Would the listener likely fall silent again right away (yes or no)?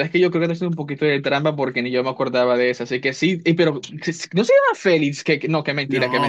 no